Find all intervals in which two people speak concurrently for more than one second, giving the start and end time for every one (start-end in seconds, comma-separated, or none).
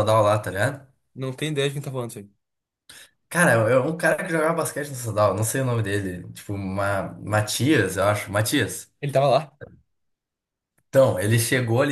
none